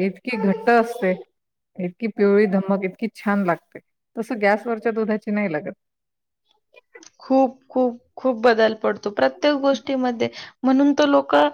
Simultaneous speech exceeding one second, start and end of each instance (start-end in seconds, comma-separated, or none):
none